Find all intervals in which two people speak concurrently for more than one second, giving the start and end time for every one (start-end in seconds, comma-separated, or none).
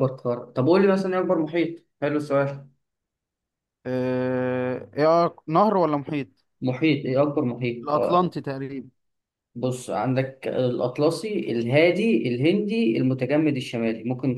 none